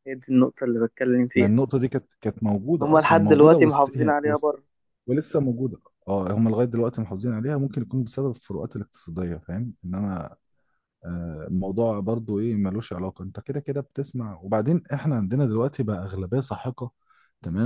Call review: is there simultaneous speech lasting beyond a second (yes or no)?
yes